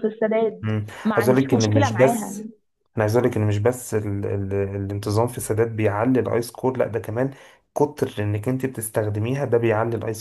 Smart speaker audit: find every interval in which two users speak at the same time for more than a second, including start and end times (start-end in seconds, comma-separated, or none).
0.6-2.4